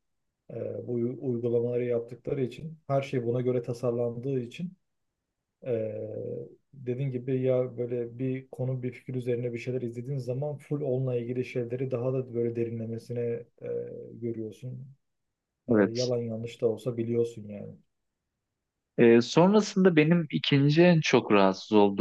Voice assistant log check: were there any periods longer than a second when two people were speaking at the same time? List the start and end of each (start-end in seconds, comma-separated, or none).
none